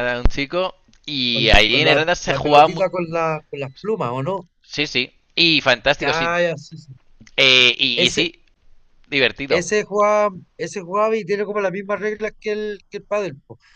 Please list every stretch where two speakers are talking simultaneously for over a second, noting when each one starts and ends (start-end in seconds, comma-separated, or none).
1.3-2.8